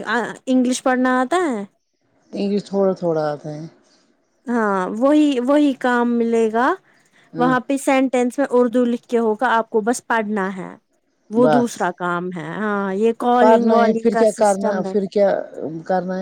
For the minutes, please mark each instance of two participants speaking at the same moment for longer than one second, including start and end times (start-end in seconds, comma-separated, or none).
13.4-14.9